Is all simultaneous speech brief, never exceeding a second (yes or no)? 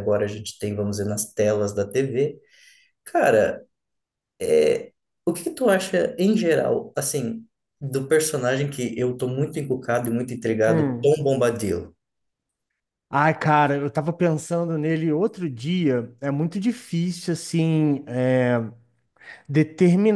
yes